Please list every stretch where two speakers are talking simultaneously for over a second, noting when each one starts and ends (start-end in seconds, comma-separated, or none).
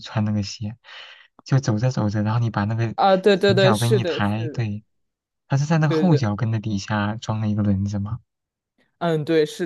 3.3-4.7